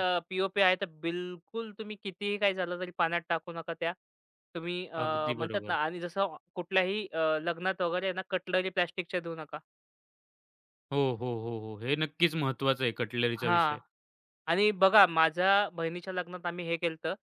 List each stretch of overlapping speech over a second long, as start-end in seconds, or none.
none